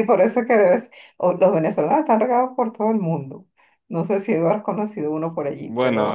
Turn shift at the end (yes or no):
yes